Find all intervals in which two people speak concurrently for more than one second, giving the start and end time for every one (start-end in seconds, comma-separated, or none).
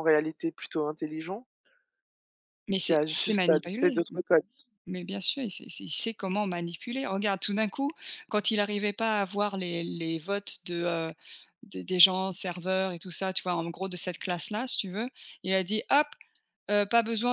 2.8-4.0